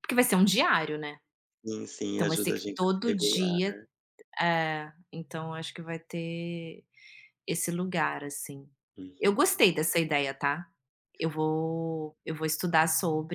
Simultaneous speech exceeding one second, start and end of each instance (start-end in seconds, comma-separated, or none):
2.1-3.6